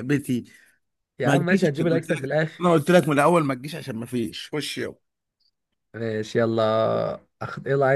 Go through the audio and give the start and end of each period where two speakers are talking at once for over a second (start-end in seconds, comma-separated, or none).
1.2-2.6